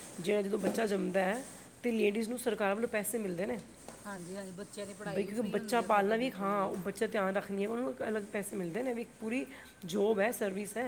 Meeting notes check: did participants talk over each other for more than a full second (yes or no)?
yes